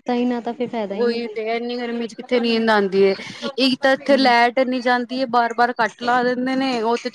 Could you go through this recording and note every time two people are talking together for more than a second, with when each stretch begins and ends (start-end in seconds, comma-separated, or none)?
none